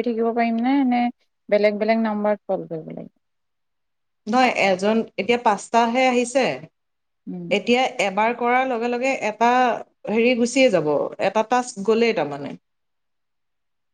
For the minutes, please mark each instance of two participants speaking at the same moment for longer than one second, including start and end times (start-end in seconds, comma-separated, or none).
none